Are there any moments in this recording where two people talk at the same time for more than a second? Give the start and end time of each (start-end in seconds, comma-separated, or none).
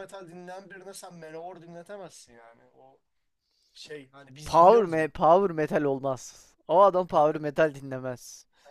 none